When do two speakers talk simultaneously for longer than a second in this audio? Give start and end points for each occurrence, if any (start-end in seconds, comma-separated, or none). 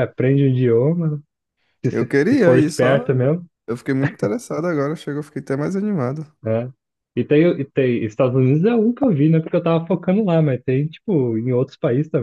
1.9-3.1